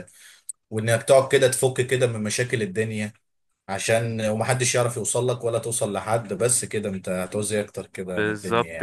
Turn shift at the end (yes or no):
yes